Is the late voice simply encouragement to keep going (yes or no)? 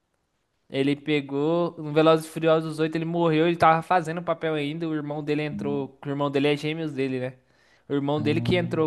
yes